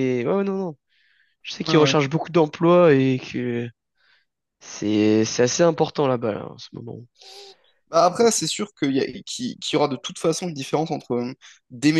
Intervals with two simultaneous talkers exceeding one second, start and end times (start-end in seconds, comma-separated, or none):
none